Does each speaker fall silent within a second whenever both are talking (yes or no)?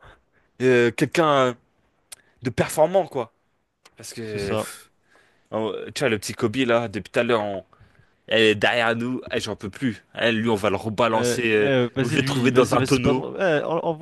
no